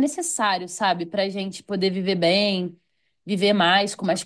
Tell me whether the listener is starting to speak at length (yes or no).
no